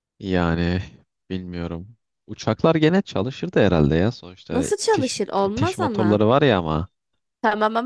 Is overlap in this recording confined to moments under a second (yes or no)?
no